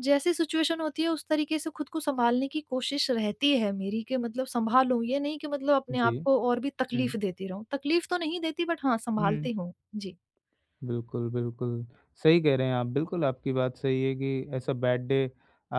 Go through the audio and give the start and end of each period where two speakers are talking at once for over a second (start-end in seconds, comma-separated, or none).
none